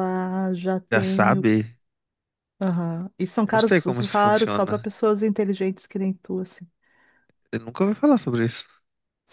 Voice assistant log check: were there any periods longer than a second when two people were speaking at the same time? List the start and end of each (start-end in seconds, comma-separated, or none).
3.4-4.9